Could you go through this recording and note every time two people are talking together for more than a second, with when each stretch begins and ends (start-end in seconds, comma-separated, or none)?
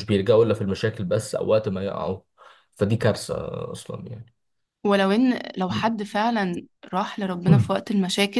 none